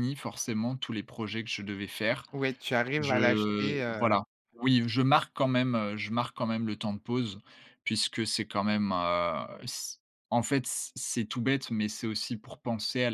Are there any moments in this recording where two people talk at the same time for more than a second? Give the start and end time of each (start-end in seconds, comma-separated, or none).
3.0-4.2